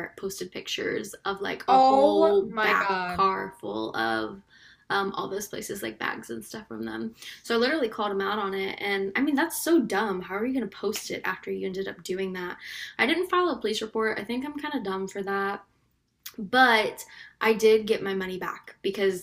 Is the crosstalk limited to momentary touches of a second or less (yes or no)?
no